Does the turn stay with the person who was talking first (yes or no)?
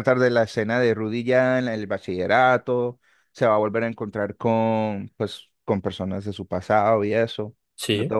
yes